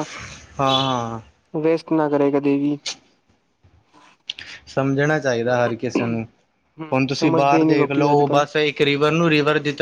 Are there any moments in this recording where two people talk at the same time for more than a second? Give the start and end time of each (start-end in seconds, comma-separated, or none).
6.9-8.4